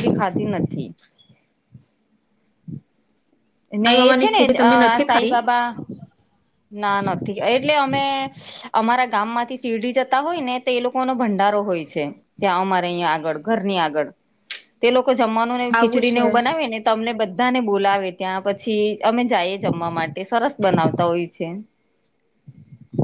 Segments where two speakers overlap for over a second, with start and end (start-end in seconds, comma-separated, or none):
3.9-5.4